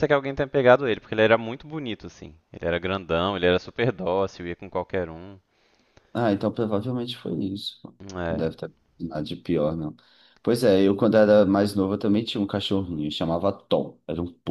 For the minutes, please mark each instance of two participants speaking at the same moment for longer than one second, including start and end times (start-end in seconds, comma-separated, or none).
none